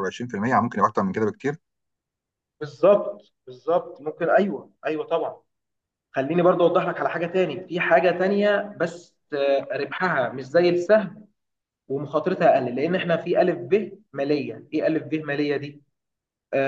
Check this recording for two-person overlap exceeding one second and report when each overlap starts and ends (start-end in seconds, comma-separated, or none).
none